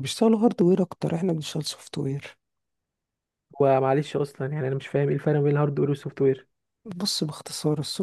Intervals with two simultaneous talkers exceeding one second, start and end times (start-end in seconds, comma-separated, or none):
none